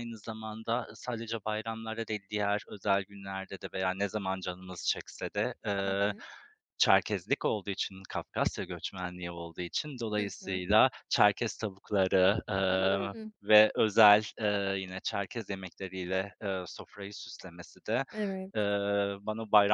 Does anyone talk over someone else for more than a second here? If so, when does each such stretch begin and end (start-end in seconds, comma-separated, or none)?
none